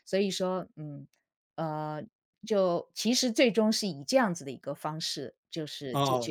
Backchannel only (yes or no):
no